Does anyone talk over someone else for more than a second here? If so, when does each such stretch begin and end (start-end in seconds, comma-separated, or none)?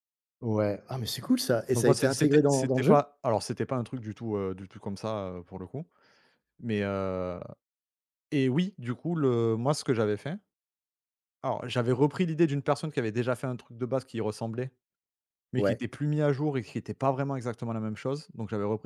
1.7-3.1